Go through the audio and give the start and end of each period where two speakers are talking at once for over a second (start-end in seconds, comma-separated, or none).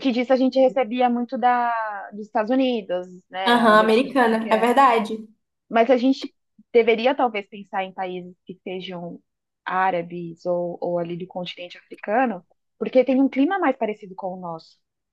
3.5-4.8